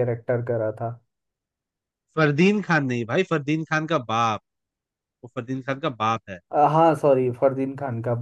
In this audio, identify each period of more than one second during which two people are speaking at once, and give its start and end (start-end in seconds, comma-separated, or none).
none